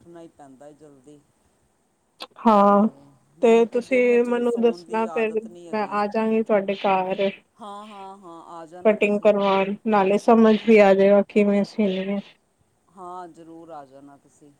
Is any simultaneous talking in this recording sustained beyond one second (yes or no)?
yes